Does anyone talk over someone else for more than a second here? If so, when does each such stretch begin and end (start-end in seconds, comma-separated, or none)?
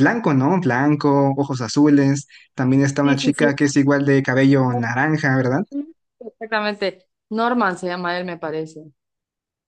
none